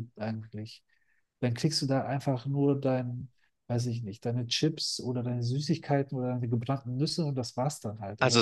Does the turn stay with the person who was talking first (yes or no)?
no